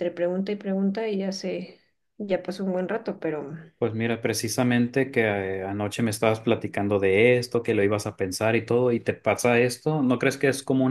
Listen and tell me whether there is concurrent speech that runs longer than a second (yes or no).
no